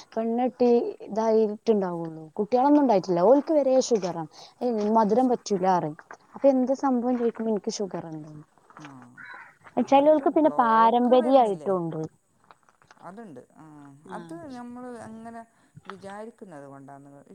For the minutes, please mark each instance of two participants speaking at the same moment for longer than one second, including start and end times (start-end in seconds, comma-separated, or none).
9.9-11.7